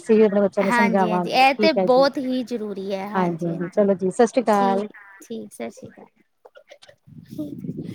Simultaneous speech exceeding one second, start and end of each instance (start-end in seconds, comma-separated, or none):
0.7-2.0